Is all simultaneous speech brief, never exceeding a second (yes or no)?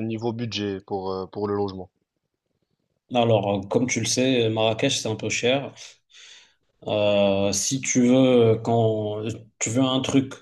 yes